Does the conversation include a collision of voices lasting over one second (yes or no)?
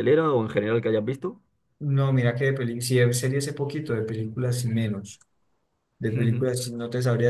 no